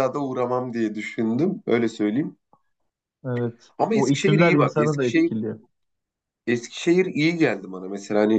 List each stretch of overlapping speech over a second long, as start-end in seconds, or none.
3.8-5.3